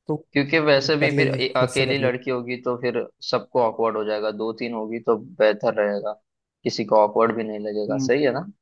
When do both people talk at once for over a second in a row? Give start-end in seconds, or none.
0.8-2.1